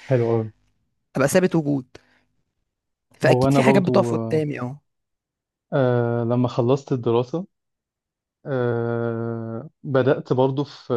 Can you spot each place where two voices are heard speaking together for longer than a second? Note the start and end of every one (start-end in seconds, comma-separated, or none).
3.2-4.4